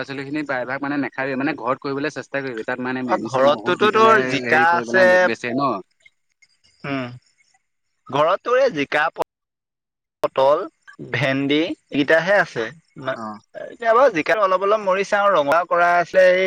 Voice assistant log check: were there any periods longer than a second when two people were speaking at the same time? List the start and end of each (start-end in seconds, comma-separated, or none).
3.1-5.2